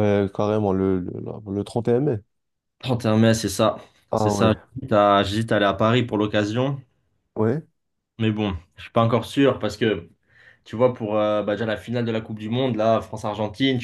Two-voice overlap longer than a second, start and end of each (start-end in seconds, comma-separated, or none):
none